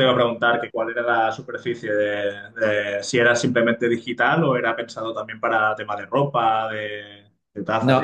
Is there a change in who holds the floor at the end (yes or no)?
yes